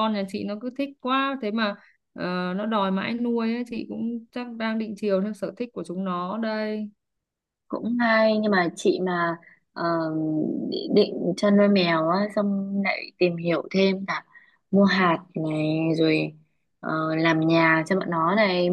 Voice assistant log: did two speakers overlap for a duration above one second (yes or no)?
no